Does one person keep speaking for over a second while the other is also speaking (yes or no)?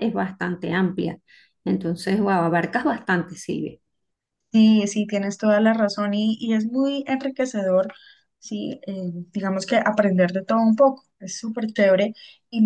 no